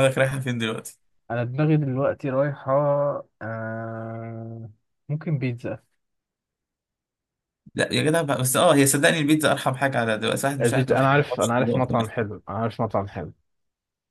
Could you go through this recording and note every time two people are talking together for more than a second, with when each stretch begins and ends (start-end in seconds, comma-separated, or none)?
10.6-12.3